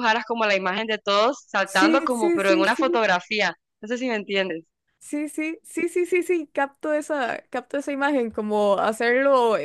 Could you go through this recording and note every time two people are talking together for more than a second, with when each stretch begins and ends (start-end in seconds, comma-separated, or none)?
1.6-3.0